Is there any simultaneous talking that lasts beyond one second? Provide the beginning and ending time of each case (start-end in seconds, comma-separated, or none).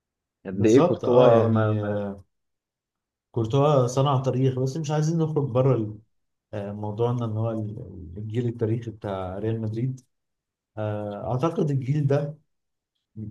0.5-2.0